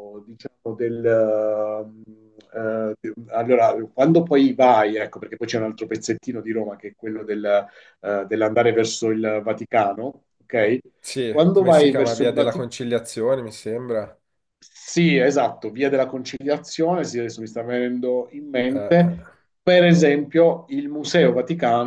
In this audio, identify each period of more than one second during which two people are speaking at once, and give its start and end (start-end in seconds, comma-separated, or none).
11.3-12.7